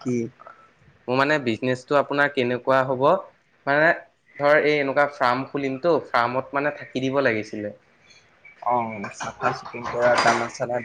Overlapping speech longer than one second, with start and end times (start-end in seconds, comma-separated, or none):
none